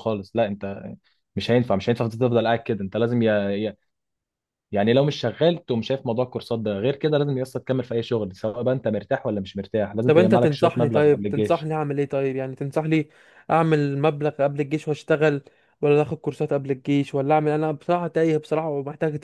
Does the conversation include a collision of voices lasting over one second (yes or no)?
yes